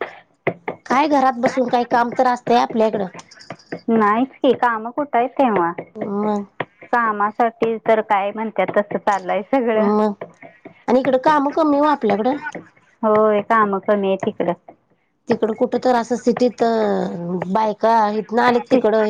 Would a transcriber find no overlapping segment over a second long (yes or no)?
yes